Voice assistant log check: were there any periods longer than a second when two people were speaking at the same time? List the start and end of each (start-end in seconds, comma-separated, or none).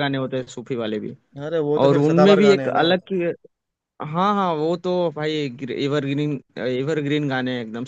1.8-3.1